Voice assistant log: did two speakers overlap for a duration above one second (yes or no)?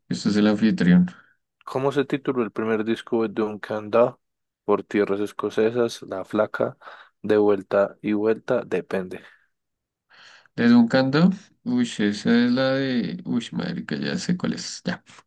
no